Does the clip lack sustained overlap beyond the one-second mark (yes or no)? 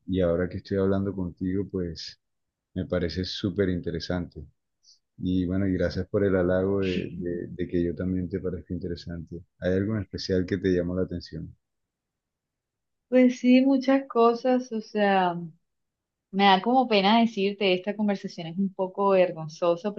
yes